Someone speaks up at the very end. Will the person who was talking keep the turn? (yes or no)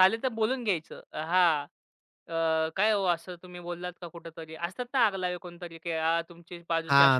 no